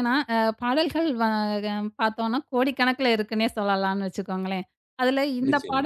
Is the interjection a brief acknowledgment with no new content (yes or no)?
yes